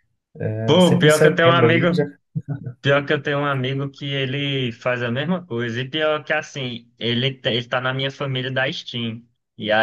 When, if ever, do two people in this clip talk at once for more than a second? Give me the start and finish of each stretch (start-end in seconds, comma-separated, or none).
0.7-1.9